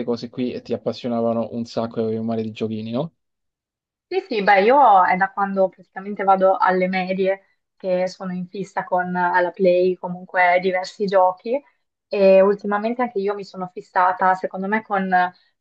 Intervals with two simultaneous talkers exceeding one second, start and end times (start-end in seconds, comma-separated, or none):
none